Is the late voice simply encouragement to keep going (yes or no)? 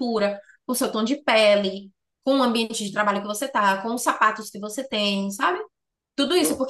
yes